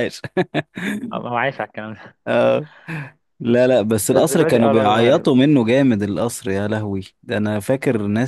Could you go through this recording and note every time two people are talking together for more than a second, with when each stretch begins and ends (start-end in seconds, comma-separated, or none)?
4.0-5.3